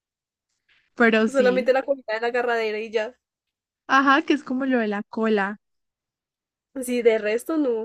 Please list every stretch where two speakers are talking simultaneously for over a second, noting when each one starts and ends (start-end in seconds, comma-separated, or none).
none